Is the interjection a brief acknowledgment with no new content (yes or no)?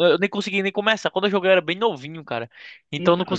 yes